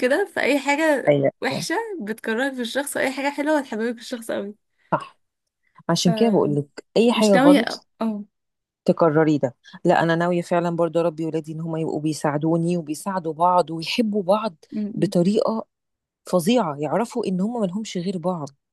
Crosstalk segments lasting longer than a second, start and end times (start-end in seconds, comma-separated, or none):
5.9-7.9